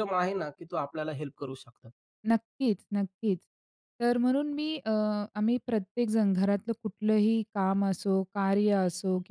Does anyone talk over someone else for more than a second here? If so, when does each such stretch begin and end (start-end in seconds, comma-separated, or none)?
none